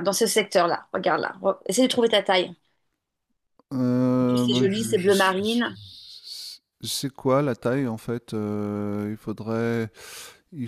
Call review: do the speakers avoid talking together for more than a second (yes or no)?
no